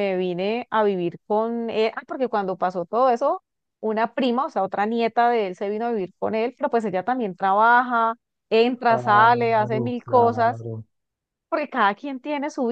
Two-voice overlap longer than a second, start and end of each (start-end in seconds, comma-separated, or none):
8.9-10.7